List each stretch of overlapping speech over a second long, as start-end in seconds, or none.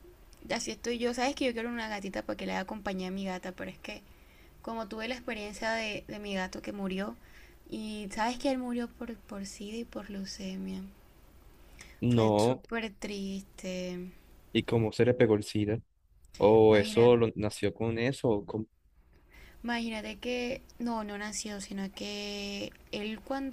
none